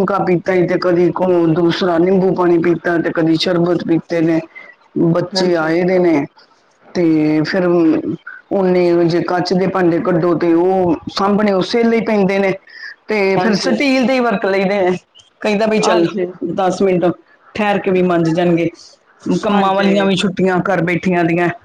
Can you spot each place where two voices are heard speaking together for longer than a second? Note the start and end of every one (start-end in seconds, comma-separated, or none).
none